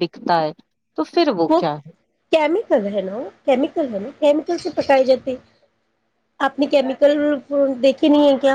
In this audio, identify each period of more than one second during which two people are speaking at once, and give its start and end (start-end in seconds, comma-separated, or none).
none